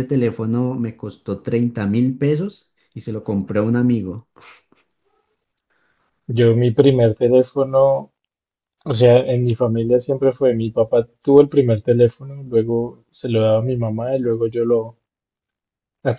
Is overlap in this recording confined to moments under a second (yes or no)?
yes